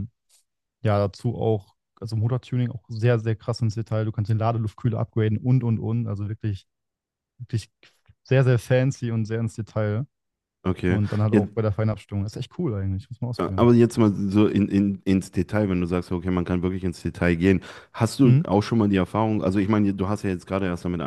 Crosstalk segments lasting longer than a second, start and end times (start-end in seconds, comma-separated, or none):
none